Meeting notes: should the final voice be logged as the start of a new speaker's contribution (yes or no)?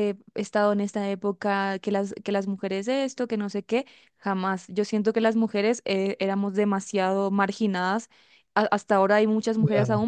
no